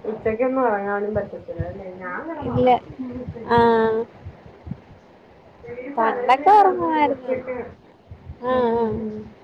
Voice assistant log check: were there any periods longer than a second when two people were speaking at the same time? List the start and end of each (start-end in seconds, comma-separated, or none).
6.0-7.3